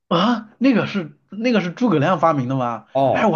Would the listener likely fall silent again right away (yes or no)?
no